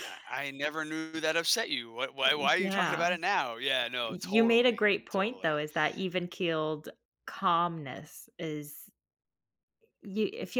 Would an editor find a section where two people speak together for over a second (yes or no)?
yes